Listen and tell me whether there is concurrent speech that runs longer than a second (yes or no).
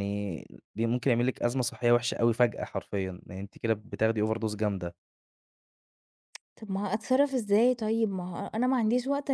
no